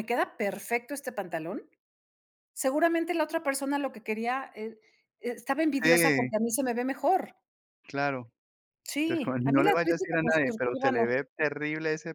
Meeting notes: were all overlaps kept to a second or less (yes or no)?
no